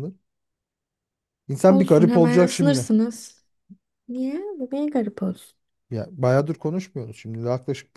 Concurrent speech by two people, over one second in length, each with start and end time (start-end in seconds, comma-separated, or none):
1.7-2.9